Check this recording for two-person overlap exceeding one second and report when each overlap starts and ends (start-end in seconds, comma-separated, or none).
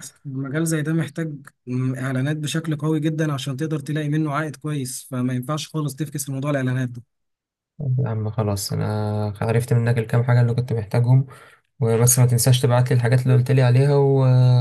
none